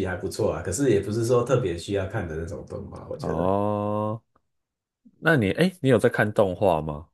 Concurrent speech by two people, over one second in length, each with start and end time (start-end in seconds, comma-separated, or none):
none